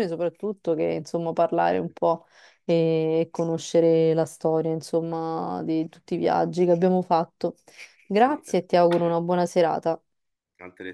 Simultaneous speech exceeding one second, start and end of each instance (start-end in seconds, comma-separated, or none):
8.1-9.4